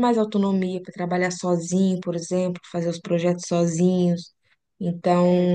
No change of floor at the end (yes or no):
yes